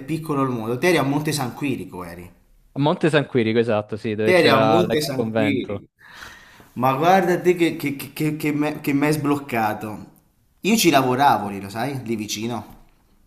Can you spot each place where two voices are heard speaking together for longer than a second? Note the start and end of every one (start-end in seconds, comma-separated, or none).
4.2-5.8